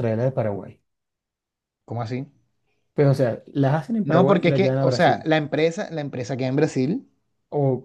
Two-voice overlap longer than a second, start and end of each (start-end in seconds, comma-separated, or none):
4.0-5.3